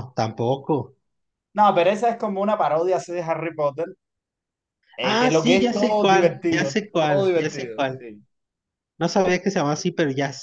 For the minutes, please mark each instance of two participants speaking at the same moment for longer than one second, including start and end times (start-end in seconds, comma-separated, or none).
5.0-8.0